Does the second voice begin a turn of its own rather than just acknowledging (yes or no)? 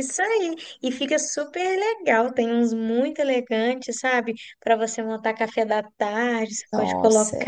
no